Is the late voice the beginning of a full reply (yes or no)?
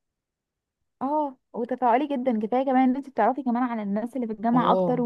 yes